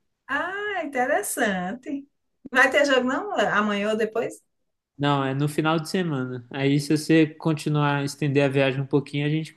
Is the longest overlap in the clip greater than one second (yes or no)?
no